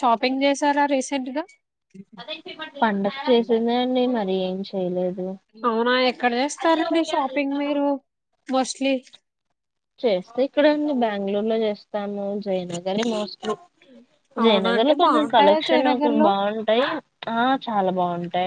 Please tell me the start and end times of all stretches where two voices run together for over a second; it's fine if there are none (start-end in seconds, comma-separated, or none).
14.4-16.3